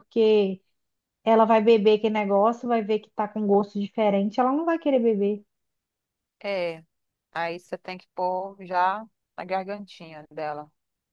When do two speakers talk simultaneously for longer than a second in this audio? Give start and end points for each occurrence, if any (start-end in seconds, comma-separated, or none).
none